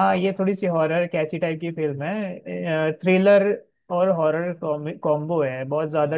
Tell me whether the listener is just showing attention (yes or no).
no